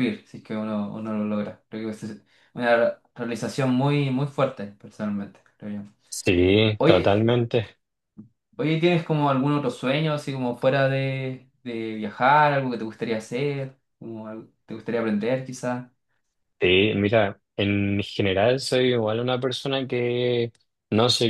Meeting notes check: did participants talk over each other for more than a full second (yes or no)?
no